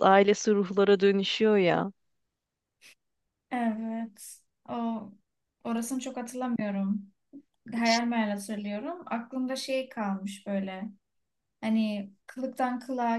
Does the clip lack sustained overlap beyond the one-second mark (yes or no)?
yes